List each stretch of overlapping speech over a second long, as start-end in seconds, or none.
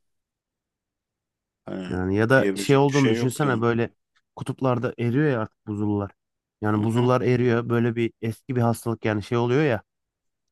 1.9-3.6